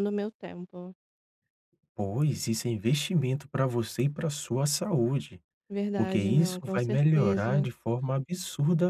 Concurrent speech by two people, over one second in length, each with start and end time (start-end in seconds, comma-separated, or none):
6.0-7.7